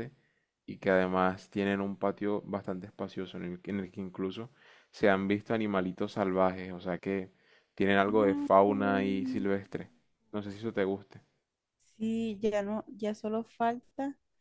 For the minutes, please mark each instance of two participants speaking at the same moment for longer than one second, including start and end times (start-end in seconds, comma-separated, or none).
8.1-9.5